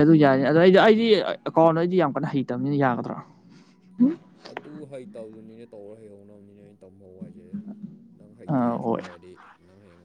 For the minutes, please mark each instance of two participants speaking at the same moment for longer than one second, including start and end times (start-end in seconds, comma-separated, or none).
none